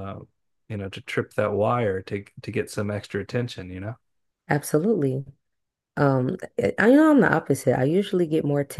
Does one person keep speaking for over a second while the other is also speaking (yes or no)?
no